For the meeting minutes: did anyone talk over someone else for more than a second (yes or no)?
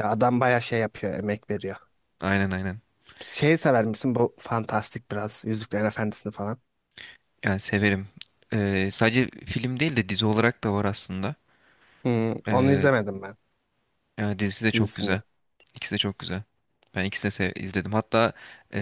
no